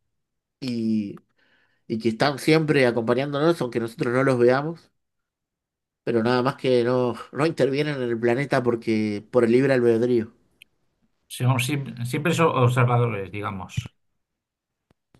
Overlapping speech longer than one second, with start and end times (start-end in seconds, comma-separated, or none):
none